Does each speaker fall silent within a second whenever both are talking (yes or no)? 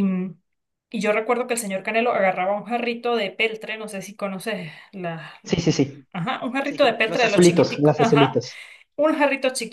no